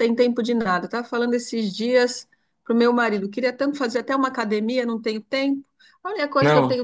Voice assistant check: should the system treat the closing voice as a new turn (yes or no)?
no